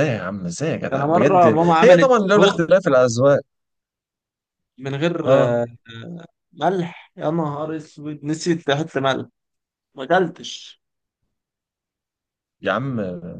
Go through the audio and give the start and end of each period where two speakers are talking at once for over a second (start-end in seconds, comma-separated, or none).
0.9-2.6